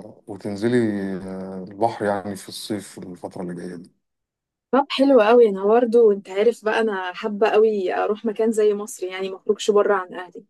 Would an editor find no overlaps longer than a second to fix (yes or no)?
yes